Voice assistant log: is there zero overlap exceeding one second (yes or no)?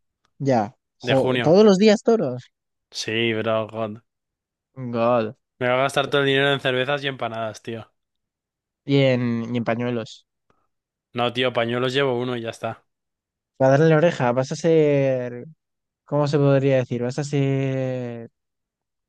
yes